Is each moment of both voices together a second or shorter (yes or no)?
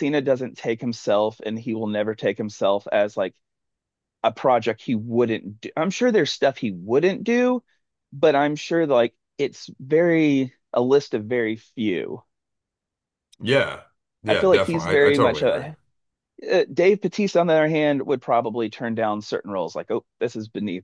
no